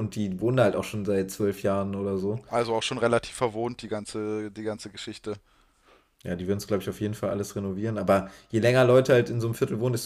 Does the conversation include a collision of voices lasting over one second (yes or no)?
no